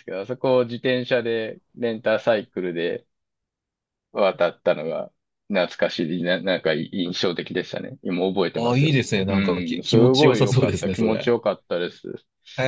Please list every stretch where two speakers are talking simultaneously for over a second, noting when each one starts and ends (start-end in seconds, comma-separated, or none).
8.6-11.3